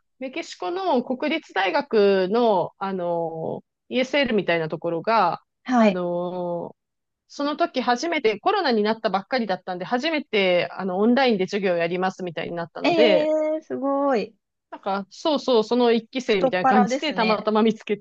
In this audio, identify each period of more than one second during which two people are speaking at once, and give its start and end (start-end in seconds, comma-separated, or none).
16.3-17.5